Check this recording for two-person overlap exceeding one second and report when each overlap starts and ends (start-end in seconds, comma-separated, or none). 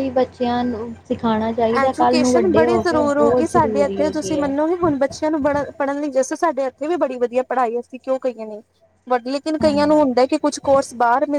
1.8-4.5